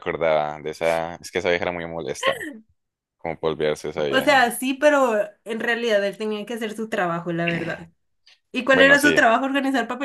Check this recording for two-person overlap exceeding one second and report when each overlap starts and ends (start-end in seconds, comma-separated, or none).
none